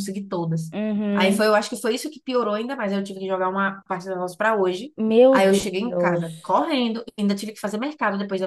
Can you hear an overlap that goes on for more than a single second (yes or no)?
yes